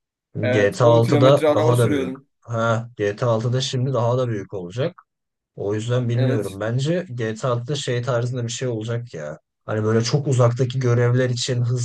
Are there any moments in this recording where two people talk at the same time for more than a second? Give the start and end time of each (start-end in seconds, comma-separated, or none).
0.5-2.3